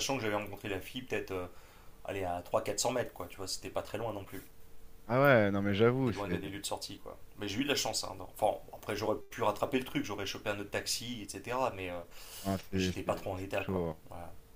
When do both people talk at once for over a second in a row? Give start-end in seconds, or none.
12.7-14.0